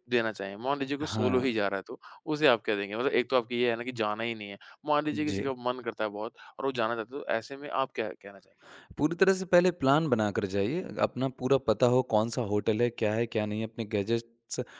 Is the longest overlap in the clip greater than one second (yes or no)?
no